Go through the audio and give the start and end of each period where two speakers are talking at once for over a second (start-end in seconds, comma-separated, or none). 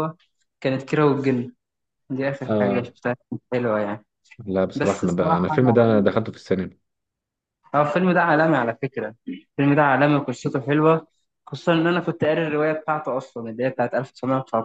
4.8-6.1